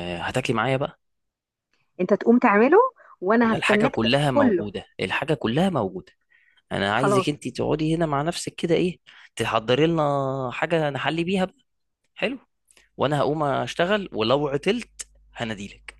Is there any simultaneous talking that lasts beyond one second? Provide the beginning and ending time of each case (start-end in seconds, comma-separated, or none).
3.4-4.6